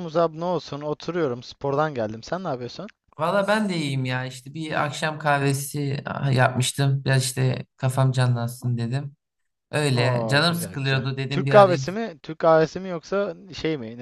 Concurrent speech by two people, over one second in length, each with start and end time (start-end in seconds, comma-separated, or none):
10.0-11.9